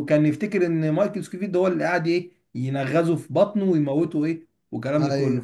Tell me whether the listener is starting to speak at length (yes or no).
yes